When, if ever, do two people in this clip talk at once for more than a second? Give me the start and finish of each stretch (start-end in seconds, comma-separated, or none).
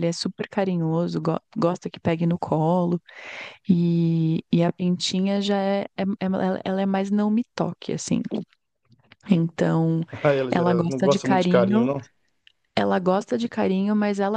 10.5-11.9